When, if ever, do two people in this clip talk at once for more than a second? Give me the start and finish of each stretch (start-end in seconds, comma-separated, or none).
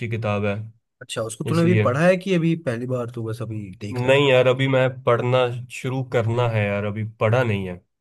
none